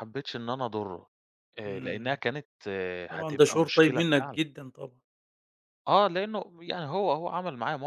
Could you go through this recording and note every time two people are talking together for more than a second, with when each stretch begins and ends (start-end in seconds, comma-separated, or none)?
3.1-4.4